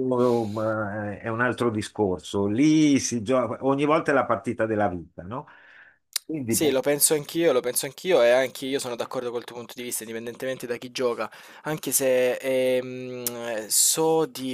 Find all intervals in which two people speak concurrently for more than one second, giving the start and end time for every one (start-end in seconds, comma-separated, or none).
none